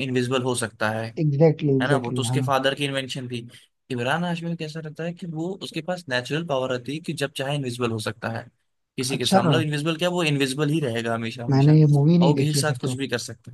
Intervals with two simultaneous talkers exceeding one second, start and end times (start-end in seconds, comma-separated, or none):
11.5-12.9